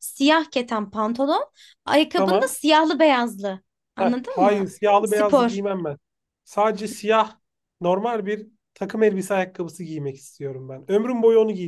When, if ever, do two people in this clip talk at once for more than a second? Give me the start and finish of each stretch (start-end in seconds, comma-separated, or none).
4.0-5.6